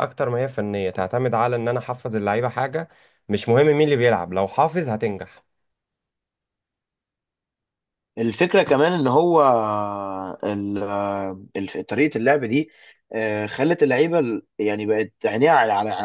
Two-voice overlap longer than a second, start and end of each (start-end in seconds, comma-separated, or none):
none